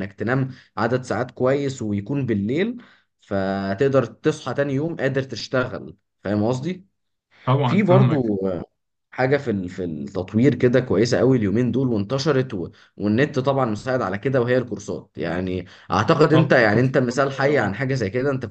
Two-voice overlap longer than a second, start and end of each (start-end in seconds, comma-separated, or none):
16.3-17.7